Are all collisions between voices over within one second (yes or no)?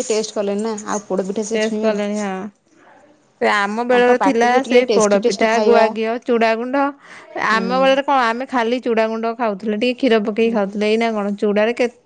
no